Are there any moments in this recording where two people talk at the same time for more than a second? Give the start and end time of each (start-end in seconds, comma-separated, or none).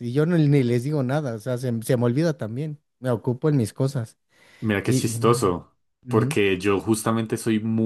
none